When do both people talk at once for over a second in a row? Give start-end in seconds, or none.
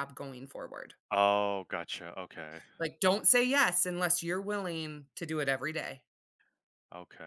none